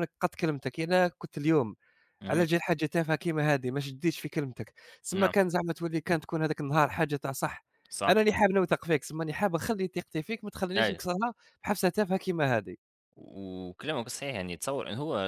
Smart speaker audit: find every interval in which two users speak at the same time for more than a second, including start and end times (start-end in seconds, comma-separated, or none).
none